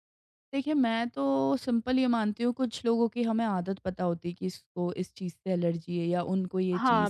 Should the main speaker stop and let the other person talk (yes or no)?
yes